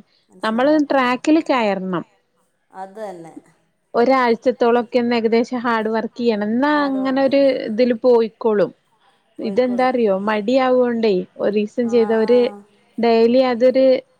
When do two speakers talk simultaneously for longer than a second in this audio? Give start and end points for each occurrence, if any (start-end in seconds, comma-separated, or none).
none